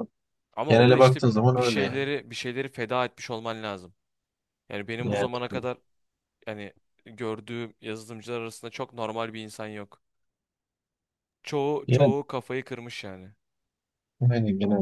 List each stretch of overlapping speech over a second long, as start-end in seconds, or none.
0.7-2.0